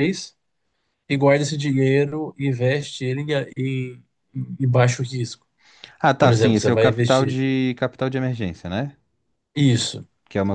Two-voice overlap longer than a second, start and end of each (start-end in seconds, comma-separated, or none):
6.2-7.4